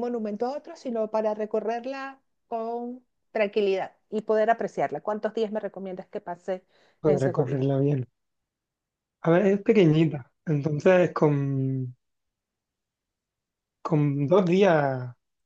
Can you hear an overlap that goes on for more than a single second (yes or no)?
no